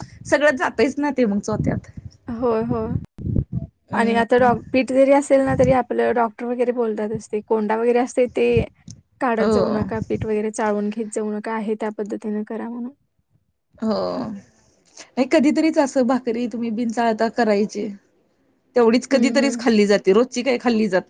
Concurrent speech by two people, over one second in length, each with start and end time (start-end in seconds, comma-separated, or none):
none